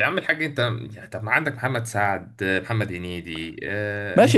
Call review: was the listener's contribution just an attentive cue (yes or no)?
no